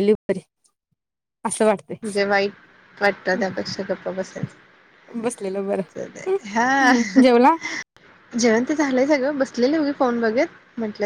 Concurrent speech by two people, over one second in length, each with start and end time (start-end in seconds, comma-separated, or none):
none